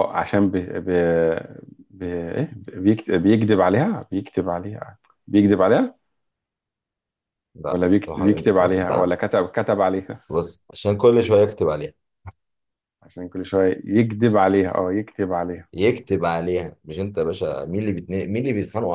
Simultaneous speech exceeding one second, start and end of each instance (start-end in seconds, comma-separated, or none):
7.7-9.1